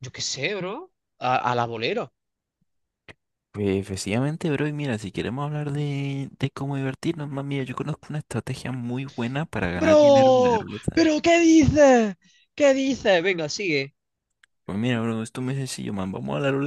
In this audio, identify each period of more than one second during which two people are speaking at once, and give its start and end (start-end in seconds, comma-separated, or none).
9.8-11.1